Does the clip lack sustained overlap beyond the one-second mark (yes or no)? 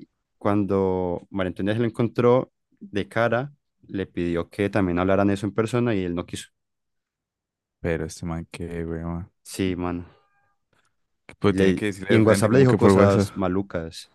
no